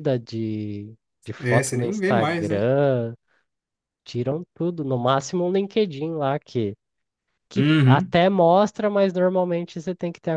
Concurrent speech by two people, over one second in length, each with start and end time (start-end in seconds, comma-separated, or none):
1.4-2.7